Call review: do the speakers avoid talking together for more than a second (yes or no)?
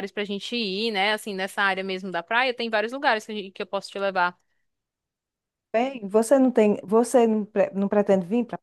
yes